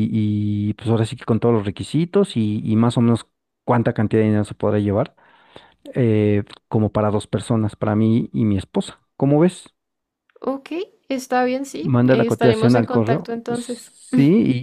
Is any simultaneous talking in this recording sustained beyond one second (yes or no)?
yes